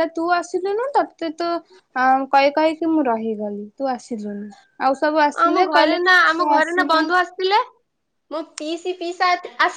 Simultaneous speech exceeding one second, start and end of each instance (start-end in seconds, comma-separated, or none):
5.5-7.0